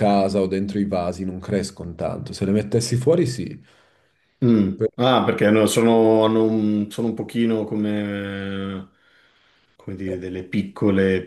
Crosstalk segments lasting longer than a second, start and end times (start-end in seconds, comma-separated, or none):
none